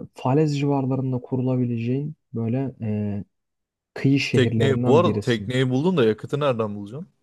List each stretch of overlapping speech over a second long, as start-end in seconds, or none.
4.3-5.5